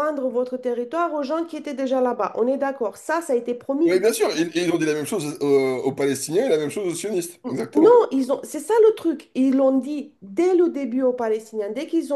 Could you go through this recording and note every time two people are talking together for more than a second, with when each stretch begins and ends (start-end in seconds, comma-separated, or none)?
none